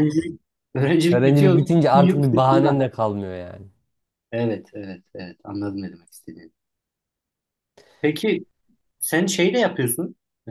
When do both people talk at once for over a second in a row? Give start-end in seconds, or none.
1.1-2.8